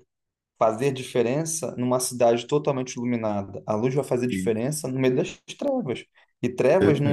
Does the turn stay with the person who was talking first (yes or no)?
yes